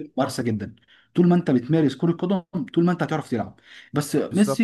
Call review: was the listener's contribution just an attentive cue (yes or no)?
yes